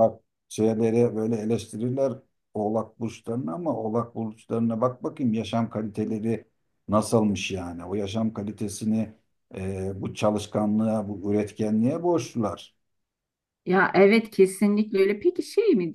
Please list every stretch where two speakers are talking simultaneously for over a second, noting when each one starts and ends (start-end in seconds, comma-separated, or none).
none